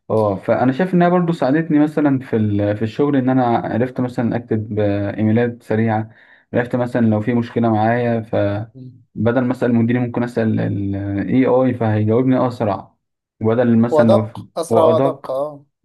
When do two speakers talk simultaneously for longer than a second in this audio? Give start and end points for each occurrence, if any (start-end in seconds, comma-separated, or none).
13.9-15.3